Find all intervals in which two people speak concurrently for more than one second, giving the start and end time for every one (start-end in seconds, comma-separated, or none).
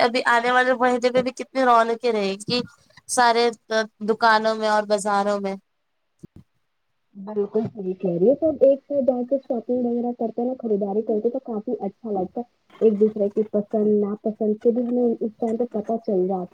none